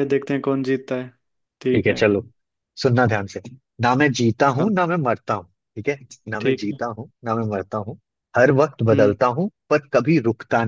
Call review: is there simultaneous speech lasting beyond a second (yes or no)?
no